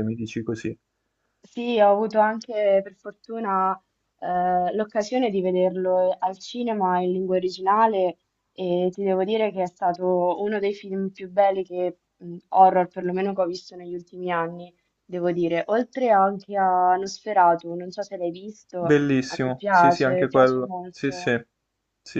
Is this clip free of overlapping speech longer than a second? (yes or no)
no